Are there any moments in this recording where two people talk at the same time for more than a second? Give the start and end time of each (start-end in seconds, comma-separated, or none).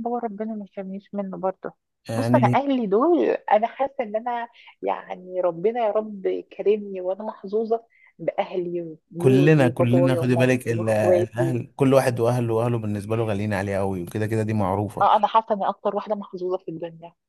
9.2-11.6